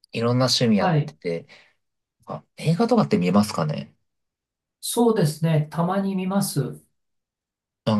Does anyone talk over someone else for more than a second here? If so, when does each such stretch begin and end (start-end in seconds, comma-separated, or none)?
none